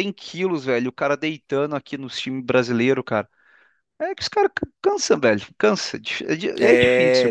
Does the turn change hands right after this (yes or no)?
yes